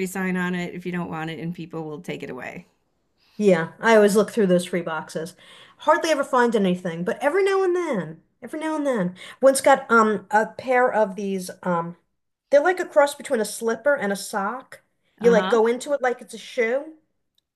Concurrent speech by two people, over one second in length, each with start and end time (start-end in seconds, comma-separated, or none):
none